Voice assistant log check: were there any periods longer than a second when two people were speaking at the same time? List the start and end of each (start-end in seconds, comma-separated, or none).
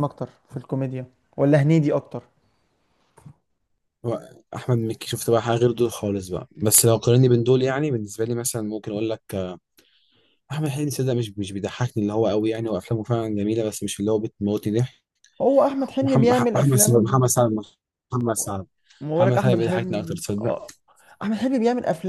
16.0-17.3, 19.2-20.6